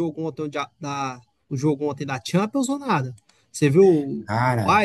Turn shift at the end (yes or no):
yes